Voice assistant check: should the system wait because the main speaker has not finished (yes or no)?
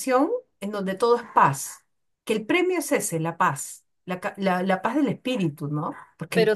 no